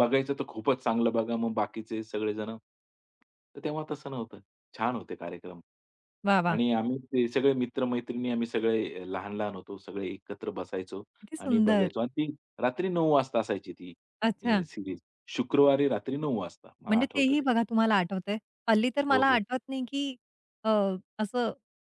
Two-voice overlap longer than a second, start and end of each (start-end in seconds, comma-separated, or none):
none